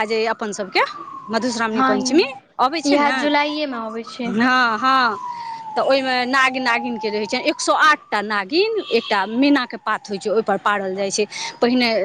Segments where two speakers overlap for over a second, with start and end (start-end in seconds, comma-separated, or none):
2.9-4.3